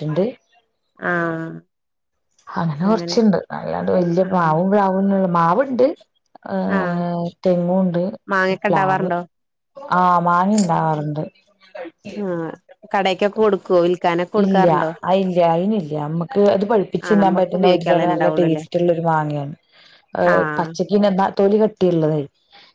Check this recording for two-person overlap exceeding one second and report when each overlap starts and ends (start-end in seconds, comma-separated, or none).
17.1-18.6